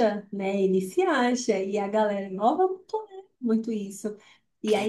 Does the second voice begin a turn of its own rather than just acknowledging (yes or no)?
no